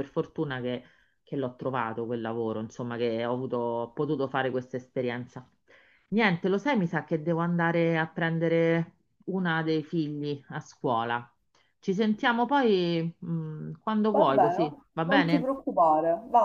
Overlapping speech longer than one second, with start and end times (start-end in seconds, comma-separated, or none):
14.1-15.5